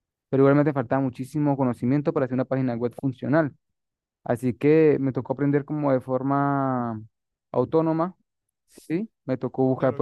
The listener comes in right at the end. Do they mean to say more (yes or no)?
yes